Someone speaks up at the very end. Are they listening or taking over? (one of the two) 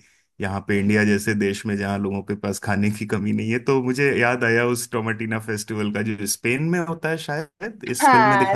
taking over